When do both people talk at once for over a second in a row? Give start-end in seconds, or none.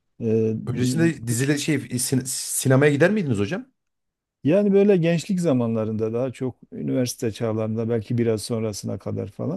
none